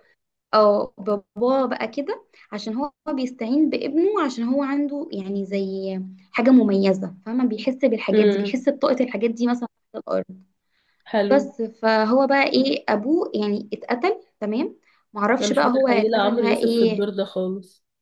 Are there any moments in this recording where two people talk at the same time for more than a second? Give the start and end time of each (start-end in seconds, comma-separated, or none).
15.4-17.1